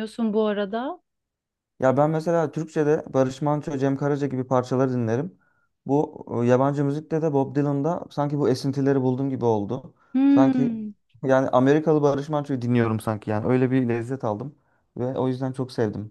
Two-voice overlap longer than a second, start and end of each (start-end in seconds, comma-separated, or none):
none